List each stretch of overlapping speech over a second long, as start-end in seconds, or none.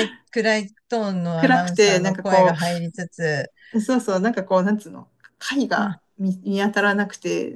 1.4-2.6